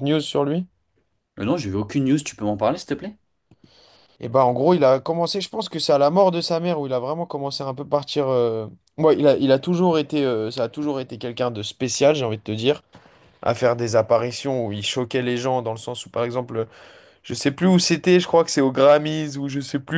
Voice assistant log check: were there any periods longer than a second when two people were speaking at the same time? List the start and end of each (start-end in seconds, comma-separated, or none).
none